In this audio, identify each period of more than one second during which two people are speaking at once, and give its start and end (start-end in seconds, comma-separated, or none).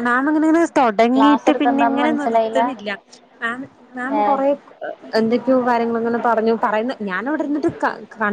1.1-2.6